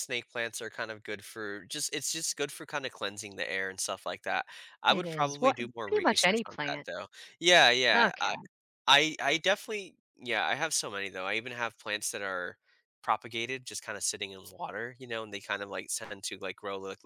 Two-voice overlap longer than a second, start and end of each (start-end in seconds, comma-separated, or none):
4.9-6.9